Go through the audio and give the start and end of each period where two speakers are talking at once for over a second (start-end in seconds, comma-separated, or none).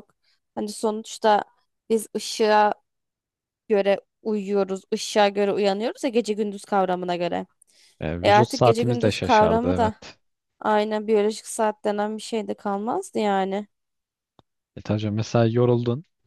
8.2-9.9